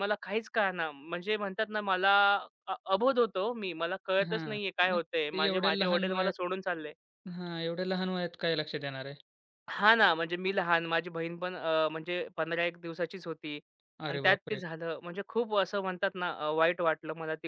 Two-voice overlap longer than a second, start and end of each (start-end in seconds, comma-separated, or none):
4.3-6.3